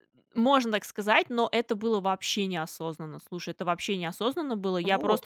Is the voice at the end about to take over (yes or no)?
no